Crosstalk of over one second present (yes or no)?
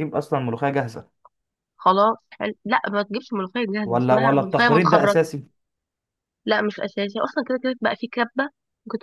yes